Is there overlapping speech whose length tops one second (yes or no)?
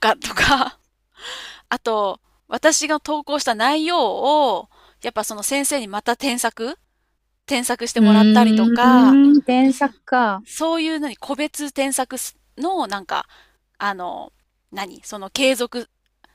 yes